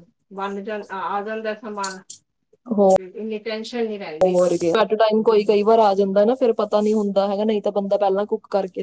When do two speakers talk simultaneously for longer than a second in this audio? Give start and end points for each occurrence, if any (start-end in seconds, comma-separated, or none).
none